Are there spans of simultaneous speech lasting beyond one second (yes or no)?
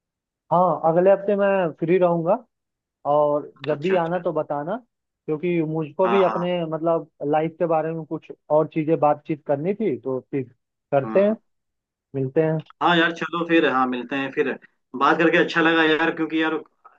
no